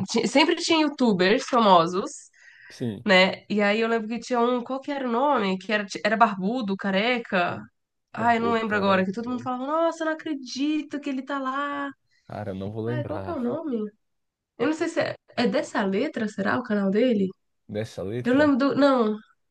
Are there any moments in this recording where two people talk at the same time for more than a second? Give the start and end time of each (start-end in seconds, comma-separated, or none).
8.1-9.5